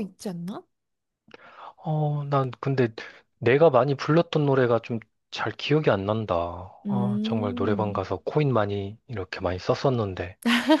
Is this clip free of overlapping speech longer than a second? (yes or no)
no